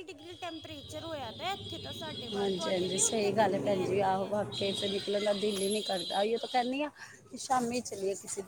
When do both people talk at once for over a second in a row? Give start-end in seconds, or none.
2.3-4.3